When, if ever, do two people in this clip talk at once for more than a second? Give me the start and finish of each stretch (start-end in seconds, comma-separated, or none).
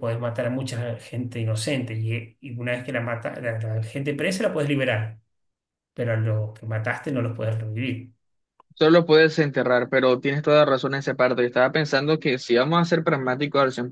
none